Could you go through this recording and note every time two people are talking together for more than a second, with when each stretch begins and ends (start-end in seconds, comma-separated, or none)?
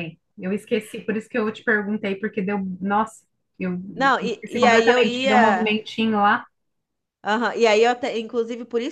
4.2-5.7